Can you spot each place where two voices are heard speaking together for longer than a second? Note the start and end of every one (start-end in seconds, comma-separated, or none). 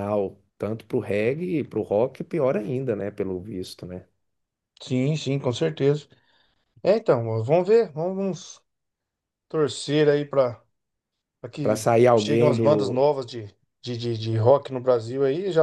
11.6-13.0